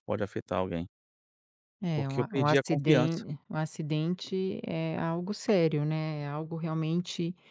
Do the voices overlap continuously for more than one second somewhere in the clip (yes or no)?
yes